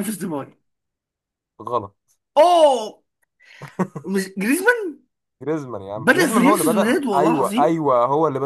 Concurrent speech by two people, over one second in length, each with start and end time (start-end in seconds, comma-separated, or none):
6.0-7.8